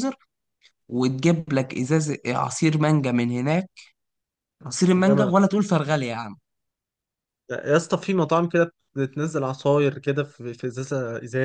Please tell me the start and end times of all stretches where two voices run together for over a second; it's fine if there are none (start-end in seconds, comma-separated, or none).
none